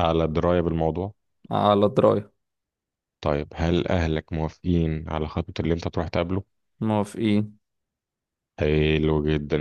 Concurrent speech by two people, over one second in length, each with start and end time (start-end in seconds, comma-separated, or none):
none